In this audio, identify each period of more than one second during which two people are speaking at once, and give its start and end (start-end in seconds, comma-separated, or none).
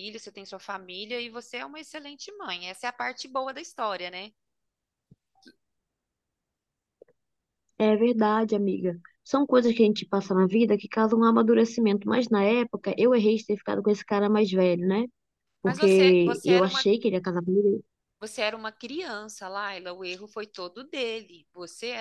15.6-16.9